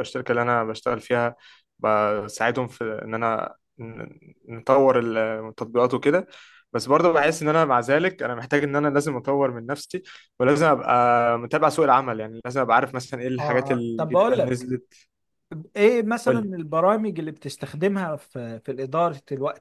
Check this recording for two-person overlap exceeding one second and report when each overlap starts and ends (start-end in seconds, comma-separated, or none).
13.4-14.7